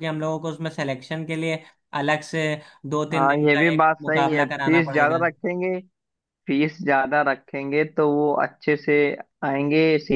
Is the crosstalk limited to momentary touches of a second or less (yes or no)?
no